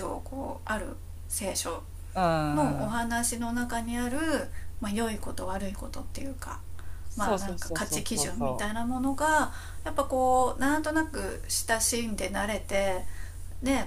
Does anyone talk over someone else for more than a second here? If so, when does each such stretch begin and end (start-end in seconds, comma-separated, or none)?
7.2-8.7